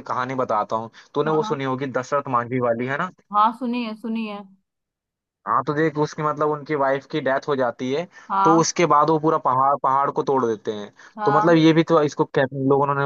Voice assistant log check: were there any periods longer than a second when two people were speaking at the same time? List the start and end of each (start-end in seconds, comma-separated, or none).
none